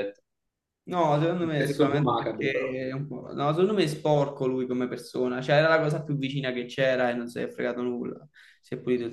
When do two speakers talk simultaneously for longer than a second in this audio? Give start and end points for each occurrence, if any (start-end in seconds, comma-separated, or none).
1.4-2.8